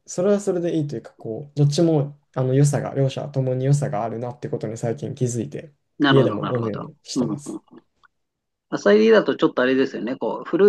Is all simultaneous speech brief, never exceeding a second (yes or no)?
no